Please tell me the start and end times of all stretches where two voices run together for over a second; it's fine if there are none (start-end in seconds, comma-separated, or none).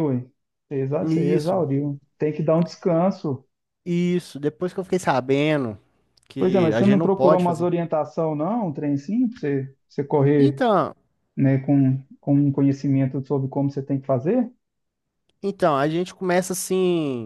6.4-7.7